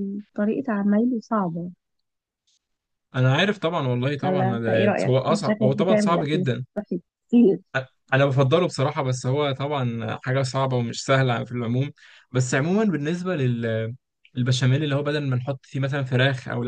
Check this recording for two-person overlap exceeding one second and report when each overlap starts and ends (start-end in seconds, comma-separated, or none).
4.2-6.4